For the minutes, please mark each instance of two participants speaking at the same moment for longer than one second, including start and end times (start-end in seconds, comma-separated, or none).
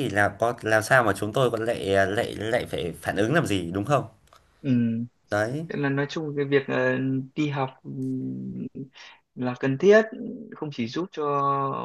none